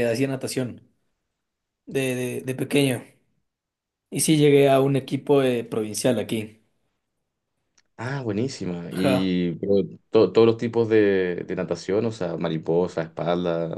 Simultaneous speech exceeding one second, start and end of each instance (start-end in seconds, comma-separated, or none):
none